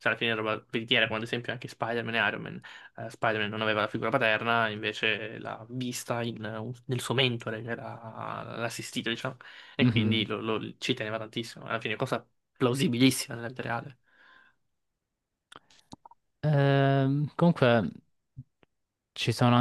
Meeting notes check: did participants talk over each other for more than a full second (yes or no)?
no